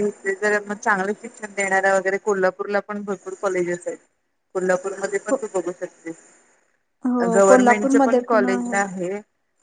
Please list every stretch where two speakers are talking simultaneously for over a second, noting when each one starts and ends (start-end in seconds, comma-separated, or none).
7.3-8.8